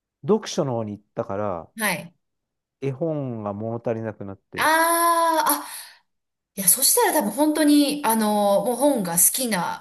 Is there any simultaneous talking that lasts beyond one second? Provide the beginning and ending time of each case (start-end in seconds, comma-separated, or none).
none